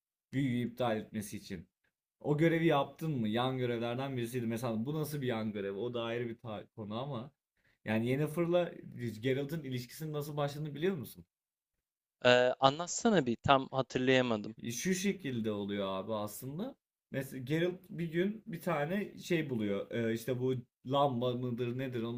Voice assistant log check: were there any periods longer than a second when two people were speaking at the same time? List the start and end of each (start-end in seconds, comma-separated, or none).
none